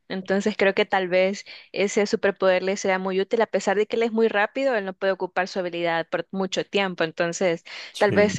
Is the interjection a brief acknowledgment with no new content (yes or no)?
yes